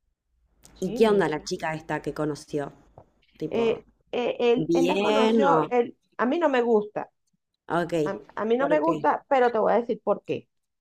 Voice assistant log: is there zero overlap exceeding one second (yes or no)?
no